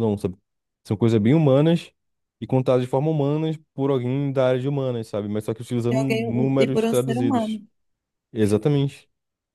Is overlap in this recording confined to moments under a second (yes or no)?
no